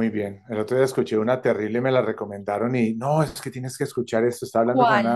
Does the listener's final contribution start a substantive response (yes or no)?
no